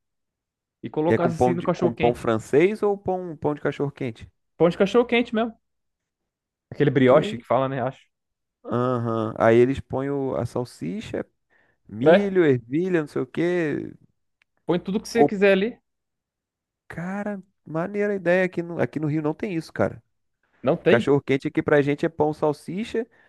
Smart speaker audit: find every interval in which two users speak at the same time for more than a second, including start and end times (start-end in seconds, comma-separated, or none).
1.0-2.3